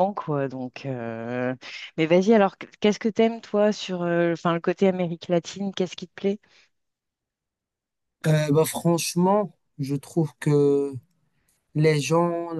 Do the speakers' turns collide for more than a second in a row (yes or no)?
no